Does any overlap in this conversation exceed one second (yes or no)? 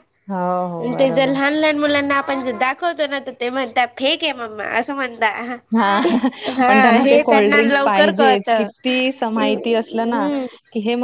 yes